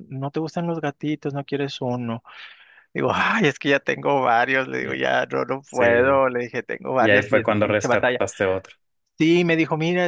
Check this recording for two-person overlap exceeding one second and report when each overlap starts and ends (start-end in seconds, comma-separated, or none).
7.0-8.2